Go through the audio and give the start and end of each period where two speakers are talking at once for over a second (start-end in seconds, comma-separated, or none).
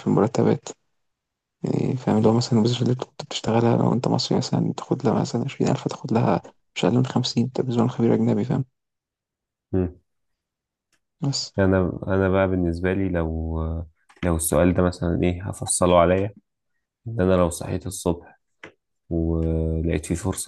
none